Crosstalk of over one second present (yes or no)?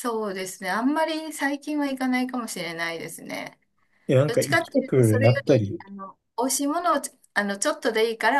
yes